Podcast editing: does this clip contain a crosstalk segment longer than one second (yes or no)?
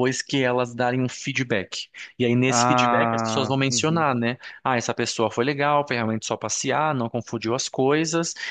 yes